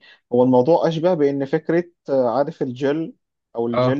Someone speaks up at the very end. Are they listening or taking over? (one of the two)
listening